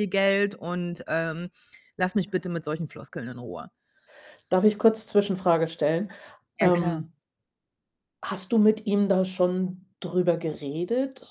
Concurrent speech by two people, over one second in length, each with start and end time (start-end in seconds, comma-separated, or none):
none